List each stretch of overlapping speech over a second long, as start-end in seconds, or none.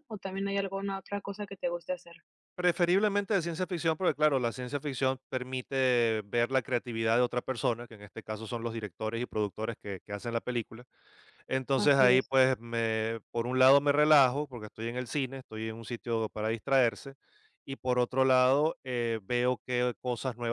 none